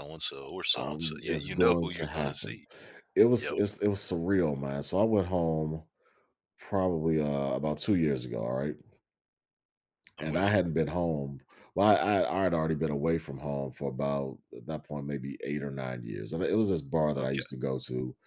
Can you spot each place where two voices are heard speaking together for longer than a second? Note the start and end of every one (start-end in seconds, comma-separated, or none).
0.8-2.6